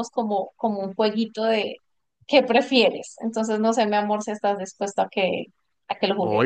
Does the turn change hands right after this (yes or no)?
yes